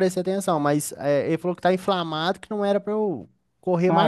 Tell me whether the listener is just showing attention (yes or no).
no